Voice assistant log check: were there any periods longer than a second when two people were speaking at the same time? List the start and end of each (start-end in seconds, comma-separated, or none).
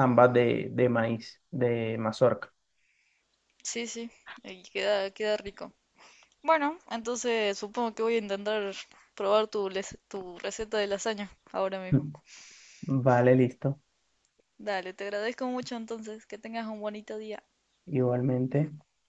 none